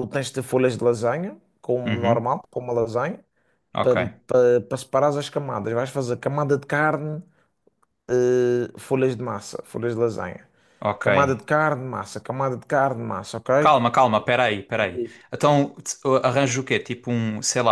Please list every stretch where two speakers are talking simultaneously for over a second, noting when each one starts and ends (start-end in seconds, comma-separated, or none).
none